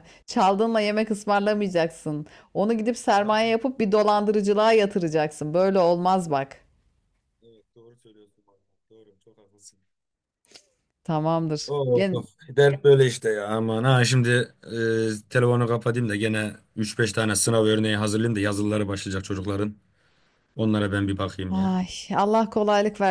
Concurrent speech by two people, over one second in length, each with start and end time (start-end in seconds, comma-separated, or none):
none